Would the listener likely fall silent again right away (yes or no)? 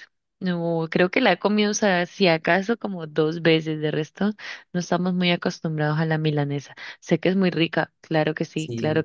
no